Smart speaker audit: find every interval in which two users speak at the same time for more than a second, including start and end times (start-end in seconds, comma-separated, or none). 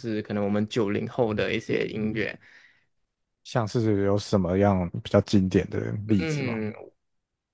none